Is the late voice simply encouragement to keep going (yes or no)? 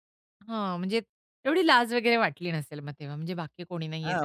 no